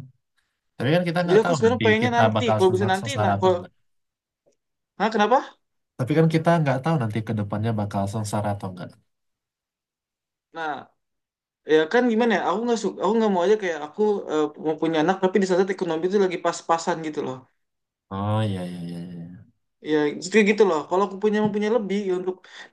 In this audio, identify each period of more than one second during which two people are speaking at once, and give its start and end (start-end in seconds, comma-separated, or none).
1.3-3.5